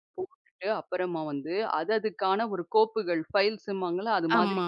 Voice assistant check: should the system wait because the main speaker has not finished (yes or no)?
yes